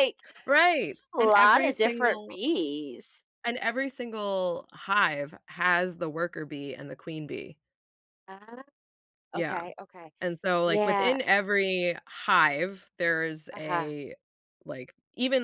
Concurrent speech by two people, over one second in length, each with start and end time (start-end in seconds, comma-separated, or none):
0.7-2.4